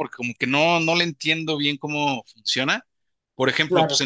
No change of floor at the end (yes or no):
yes